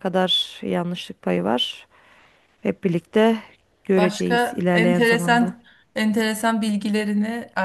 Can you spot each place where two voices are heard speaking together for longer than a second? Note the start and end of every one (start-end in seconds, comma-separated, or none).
4.0-5.5